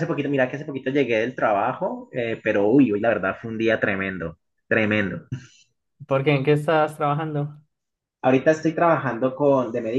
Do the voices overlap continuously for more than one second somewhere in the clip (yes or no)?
no